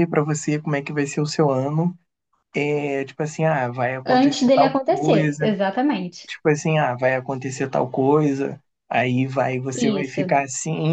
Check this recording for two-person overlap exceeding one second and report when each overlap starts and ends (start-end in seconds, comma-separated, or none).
4.0-5.6